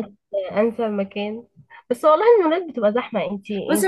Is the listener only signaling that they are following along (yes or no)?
no